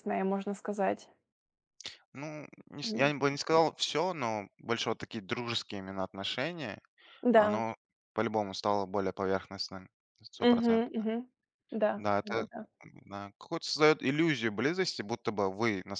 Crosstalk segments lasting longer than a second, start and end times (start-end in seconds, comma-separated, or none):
none